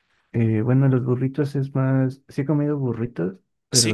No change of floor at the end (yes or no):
yes